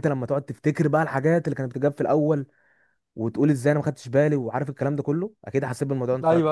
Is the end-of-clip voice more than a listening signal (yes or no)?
yes